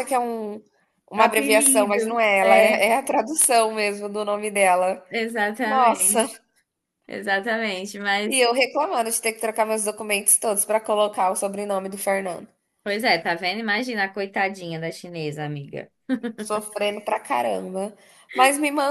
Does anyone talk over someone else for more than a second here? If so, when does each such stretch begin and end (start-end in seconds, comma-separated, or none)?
1.1-2.9